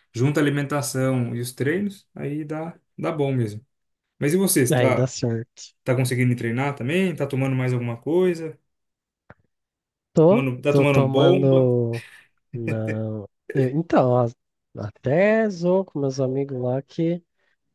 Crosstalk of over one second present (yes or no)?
yes